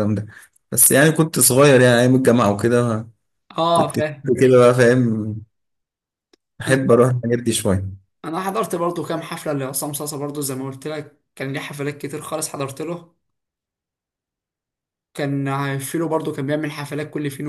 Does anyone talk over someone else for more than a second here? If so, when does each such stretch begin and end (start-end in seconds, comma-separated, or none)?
none